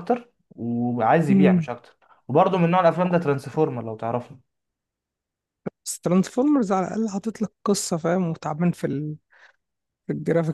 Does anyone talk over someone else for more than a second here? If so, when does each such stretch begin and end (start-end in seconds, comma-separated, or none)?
none